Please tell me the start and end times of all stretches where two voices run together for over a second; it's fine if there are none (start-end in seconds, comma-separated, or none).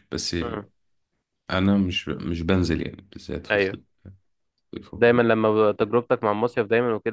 none